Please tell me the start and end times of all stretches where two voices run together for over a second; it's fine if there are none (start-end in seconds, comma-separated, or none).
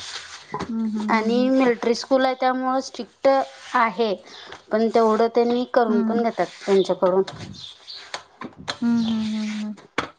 none